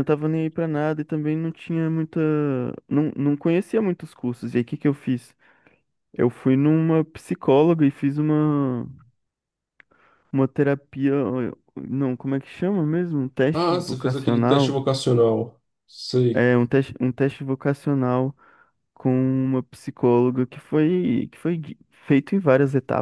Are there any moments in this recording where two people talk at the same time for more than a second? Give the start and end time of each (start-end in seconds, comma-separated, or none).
13.5-14.8